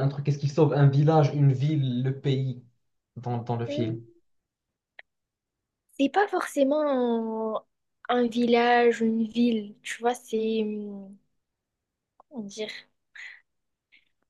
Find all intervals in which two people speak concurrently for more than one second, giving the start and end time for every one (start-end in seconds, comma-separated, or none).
none